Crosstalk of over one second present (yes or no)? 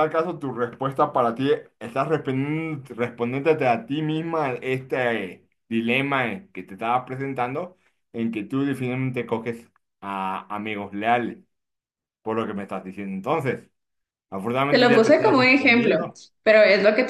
yes